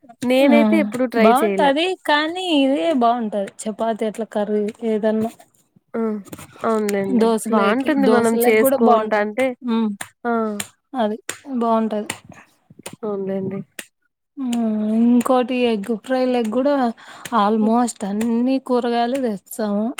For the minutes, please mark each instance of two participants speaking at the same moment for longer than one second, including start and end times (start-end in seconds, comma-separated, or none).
7.2-9.3